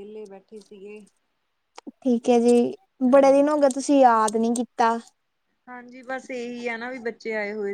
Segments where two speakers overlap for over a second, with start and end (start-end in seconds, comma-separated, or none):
none